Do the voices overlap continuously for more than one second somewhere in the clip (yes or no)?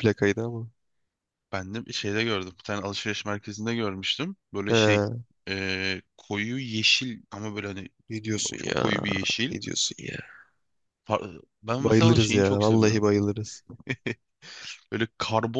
yes